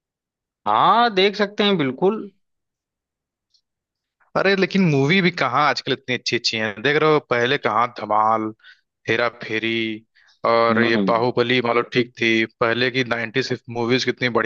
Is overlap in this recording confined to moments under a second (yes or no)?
yes